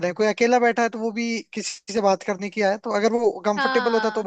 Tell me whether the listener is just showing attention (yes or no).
yes